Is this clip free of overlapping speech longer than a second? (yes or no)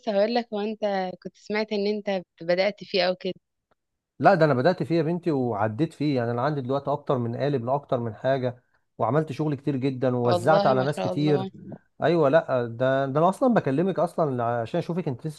no